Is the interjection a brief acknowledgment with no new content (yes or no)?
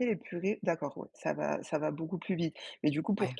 yes